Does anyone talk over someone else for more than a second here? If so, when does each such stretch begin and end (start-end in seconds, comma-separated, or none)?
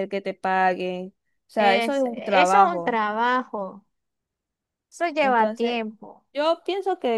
1.6-3.0